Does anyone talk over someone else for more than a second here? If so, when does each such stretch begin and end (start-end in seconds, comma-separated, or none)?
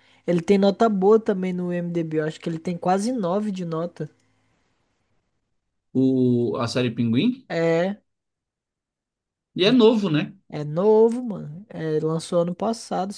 none